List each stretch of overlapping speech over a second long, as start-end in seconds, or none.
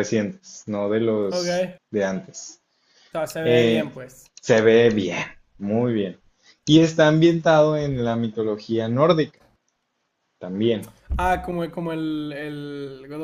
none